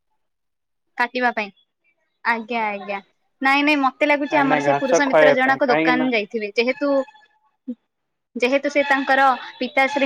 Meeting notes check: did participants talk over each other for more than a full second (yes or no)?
yes